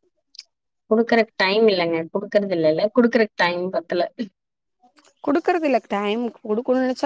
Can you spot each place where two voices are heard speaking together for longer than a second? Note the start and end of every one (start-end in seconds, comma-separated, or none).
none